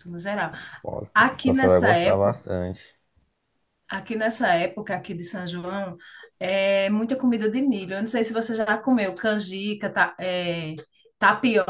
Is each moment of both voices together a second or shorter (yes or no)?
no